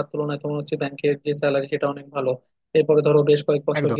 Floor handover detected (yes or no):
no